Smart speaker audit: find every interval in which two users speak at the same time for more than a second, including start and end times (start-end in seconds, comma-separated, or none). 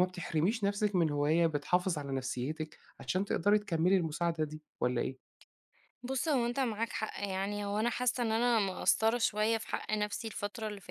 none